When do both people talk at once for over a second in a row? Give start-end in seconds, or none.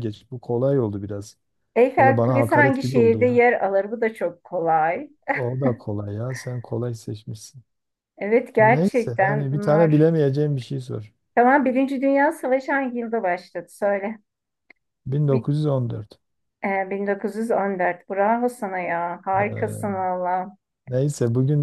2.0-3.4, 8.6-10.1